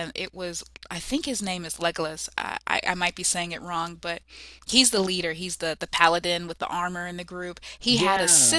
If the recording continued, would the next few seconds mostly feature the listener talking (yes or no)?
no